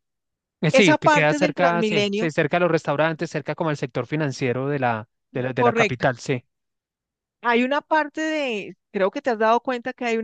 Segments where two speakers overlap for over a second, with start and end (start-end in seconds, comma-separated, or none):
0.7-2.3